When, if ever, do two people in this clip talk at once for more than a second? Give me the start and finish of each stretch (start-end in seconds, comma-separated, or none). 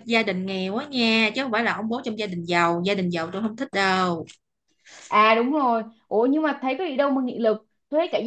none